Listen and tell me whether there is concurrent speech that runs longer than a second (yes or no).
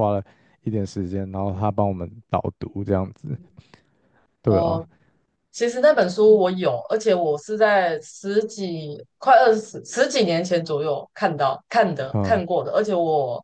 no